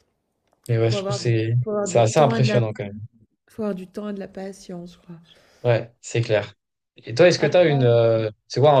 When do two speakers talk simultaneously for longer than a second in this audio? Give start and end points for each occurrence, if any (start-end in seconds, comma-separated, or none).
0.9-2.6